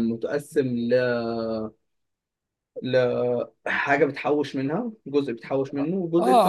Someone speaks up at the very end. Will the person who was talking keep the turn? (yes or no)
no